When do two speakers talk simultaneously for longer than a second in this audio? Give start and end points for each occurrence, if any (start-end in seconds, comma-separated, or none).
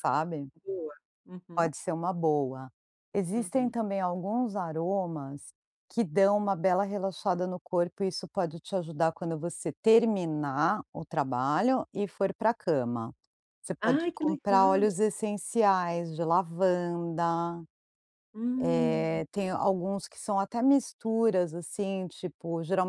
13.8-15.0